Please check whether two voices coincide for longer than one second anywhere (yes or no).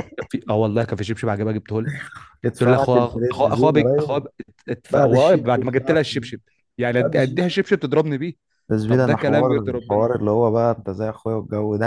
yes